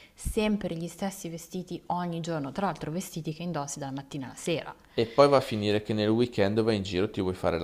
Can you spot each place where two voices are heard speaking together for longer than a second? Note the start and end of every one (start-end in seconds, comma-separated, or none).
none